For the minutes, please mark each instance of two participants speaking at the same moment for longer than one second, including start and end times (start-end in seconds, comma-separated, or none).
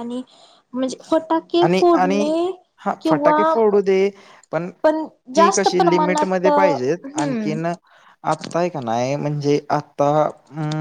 4.8-7.5